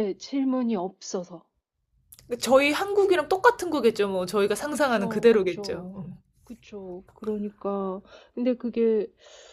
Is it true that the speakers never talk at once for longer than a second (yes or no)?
no